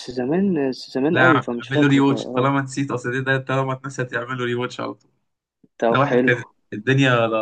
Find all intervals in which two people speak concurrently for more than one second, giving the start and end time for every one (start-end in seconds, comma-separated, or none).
1.1-2.5